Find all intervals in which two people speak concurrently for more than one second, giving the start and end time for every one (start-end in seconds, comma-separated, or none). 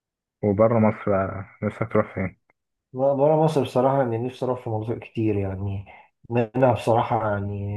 none